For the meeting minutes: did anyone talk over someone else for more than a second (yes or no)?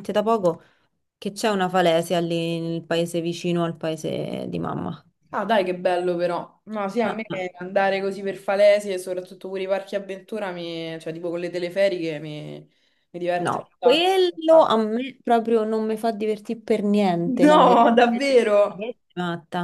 yes